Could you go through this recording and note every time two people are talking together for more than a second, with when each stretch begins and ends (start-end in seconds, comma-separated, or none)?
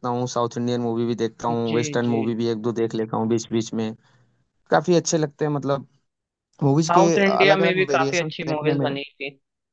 6.8-8.8